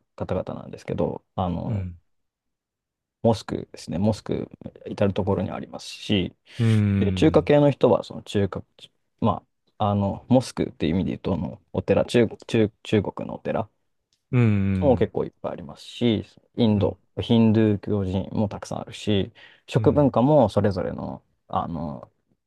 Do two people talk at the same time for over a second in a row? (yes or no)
no